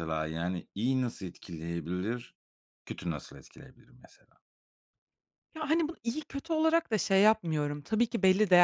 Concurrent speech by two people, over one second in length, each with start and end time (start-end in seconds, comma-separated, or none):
none